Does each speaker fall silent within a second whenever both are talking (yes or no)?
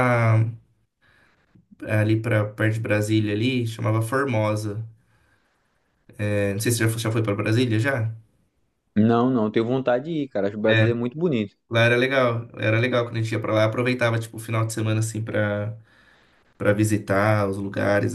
yes